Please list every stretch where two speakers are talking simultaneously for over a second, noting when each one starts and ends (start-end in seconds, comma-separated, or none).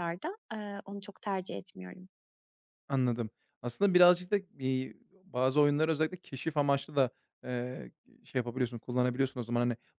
none